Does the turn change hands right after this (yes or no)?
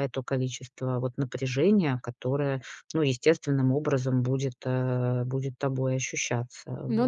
yes